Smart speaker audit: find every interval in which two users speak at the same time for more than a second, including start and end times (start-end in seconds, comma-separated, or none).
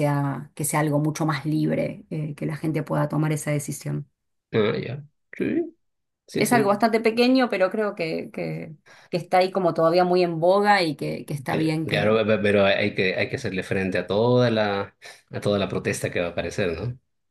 none